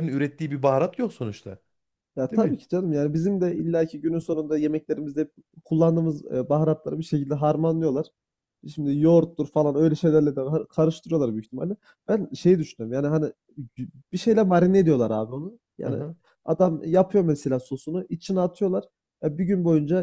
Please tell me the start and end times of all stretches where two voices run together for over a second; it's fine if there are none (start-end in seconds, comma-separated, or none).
none